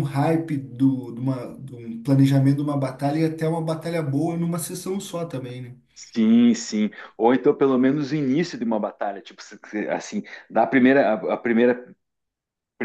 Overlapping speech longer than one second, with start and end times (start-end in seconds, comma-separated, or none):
none